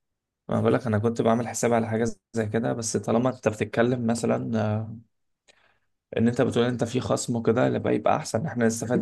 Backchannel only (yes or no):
no